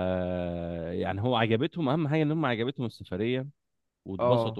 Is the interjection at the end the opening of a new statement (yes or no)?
no